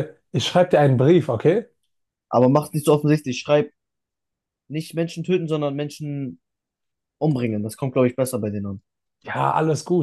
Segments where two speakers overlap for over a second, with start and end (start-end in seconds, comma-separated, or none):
none